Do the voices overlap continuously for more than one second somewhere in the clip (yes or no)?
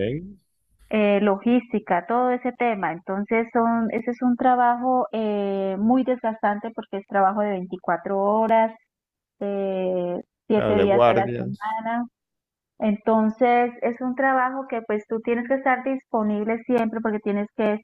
yes